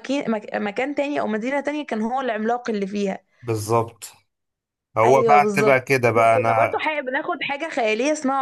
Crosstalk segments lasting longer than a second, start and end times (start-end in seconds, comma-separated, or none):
5.0-6.8